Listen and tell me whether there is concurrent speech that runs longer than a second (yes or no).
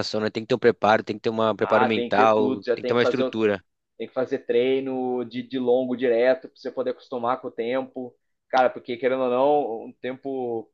yes